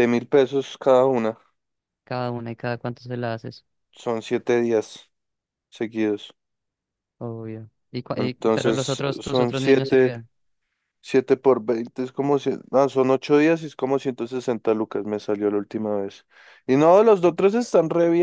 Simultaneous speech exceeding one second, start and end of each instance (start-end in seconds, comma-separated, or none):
8.2-10.1